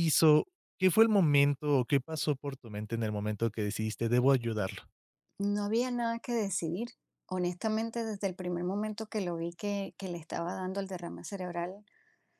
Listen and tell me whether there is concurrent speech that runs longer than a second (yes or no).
no